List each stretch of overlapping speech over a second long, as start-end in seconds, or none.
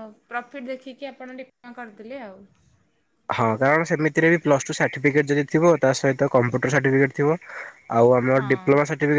none